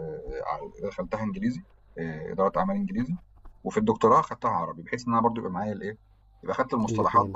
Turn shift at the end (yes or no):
no